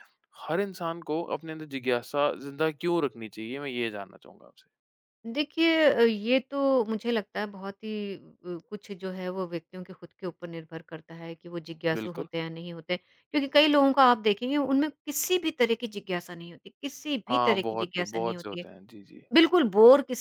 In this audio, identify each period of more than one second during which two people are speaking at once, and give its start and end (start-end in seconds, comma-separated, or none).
17.3-18.7